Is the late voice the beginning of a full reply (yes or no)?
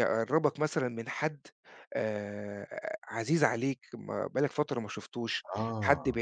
no